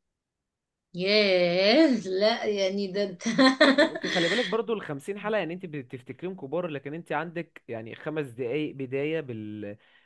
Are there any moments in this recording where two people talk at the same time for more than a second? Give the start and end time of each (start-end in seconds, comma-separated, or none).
none